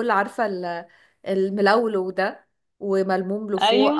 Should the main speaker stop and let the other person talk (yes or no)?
no